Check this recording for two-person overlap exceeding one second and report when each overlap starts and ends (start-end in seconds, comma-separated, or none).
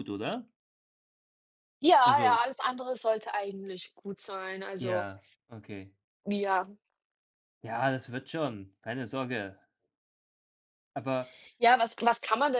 none